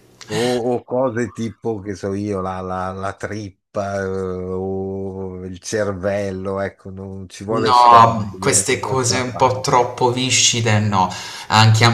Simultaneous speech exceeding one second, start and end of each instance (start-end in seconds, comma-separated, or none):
7.5-9.6